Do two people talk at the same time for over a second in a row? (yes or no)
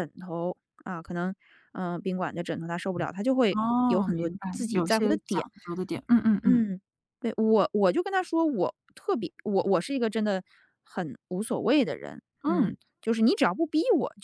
yes